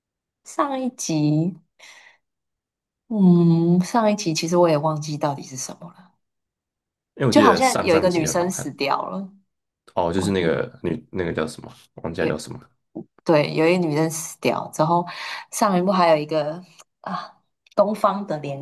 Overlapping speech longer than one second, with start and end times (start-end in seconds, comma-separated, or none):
7.3-8.7